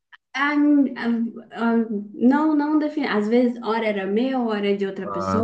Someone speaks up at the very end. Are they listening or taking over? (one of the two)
listening